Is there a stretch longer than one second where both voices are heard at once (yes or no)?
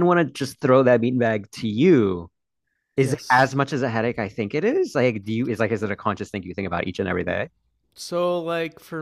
no